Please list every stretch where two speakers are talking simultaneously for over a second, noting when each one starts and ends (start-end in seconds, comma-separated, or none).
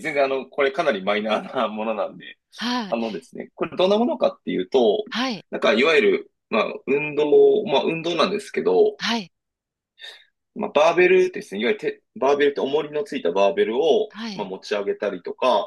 none